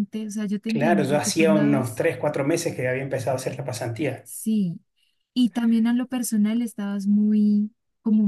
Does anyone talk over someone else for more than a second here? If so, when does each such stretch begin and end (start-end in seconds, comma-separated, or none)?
0.7-2.1